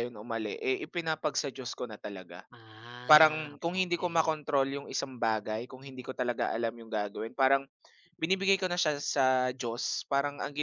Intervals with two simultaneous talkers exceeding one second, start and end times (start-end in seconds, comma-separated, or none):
3.1-4.4